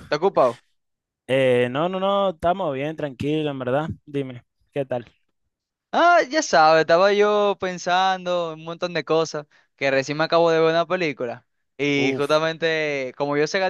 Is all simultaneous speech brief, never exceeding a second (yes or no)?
yes